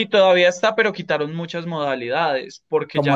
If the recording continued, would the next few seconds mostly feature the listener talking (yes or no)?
yes